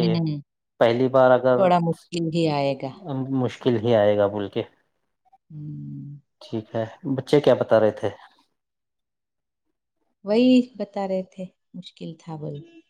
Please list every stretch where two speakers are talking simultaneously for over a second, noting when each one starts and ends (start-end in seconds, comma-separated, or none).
none